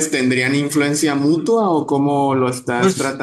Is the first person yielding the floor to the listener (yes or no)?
yes